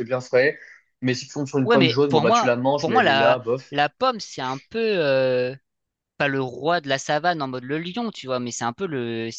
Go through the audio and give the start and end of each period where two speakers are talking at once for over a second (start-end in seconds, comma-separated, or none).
1.6-3.8